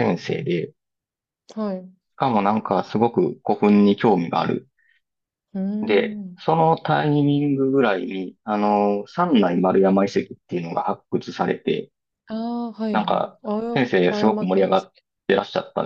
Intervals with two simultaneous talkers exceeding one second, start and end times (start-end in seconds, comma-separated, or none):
12.9-15.0